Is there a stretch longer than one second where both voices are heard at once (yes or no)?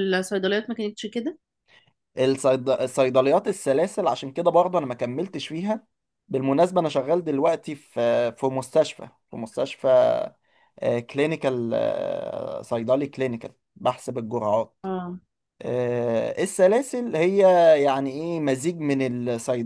no